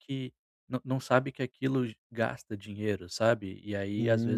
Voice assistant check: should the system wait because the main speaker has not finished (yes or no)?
no